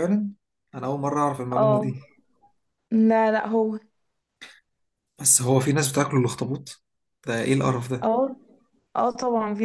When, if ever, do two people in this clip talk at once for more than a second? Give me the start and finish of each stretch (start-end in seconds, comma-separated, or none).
none